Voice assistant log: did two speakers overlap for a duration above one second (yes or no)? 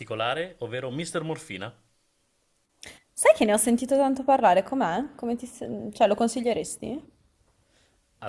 no